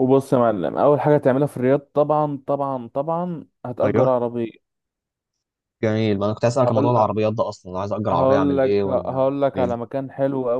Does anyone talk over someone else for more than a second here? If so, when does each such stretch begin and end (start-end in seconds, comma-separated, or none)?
8.1-9.8